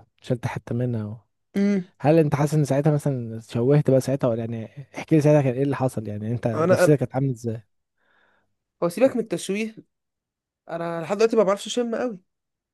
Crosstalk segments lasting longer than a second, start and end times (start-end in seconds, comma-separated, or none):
none